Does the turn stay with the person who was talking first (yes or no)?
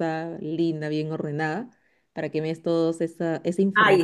no